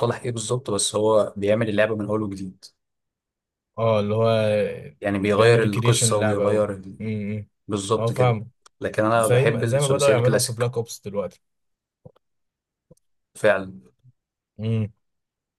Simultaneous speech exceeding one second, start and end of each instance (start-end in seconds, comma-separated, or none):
5.2-6.7, 9.2-10.7